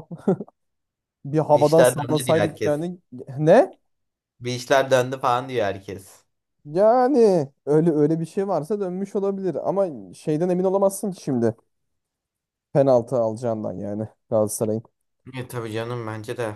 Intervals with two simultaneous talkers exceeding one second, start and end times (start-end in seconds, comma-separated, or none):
1.5-2.9